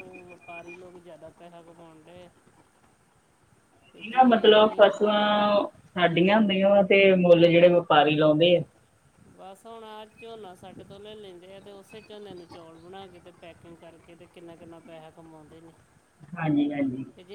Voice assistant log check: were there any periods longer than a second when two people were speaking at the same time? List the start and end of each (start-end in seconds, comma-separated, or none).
none